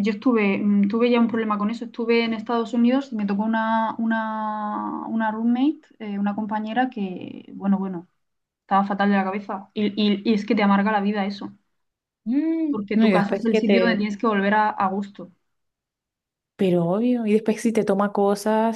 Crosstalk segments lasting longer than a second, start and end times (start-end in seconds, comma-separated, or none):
12.7-14.1